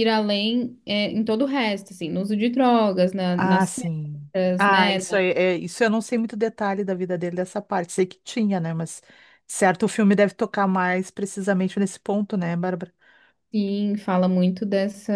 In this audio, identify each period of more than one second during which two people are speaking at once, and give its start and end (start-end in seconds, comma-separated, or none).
3.3-5.2